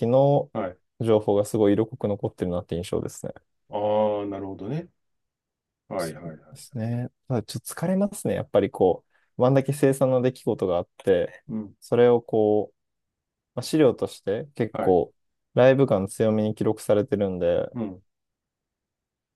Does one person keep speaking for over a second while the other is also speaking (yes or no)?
no